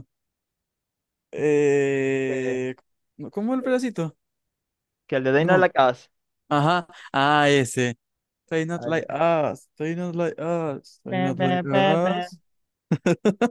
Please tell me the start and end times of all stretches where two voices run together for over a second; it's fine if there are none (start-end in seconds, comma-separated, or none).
11.1-12.3